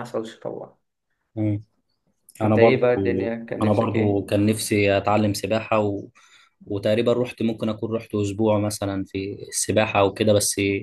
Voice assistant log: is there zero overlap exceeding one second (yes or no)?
no